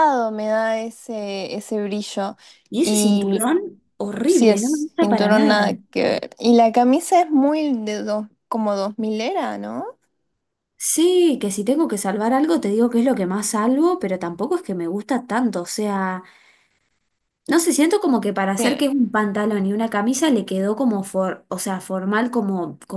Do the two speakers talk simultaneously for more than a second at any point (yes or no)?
yes